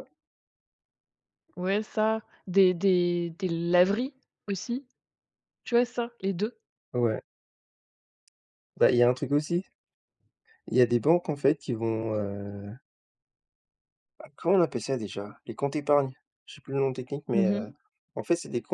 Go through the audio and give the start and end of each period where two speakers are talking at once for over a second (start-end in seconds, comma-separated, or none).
none